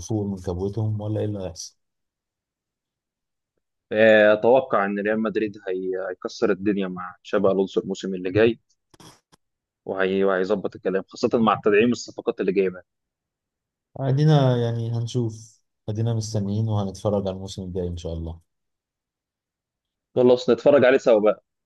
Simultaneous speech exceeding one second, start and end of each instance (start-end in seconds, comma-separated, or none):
none